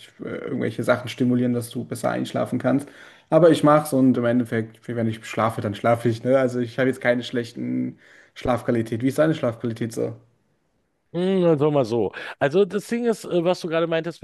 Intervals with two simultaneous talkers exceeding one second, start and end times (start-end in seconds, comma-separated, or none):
none